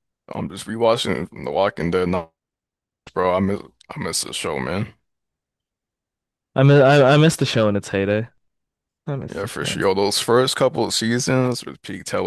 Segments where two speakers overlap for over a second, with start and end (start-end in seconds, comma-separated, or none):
none